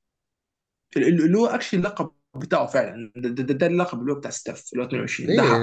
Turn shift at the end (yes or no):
yes